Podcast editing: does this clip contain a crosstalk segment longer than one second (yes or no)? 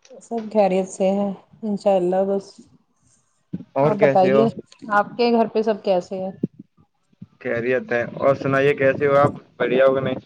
no